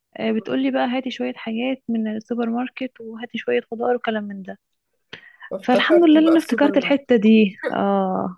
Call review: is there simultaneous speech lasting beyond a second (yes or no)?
yes